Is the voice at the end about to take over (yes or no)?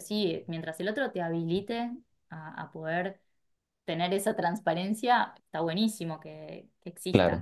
no